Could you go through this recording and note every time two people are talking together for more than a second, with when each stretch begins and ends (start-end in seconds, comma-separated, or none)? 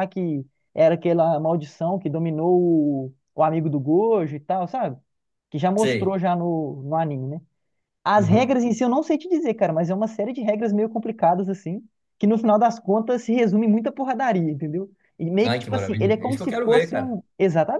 15.4-17.2